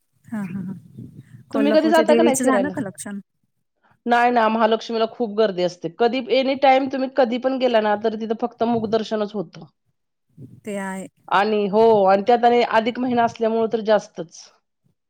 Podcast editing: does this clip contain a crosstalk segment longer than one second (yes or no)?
yes